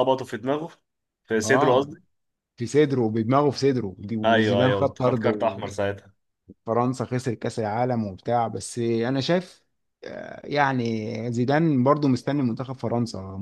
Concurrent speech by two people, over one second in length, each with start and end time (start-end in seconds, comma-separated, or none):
4.2-5.8